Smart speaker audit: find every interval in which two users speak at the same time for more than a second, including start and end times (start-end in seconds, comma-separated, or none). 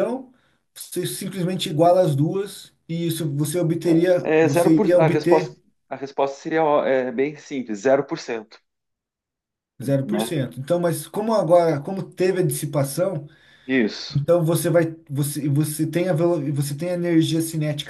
4.2-5.5